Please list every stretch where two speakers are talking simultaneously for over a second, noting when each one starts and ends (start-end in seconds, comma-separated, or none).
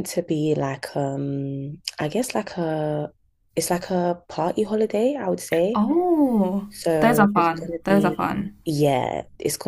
6.7-8.6